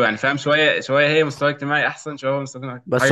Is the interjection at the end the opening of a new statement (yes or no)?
yes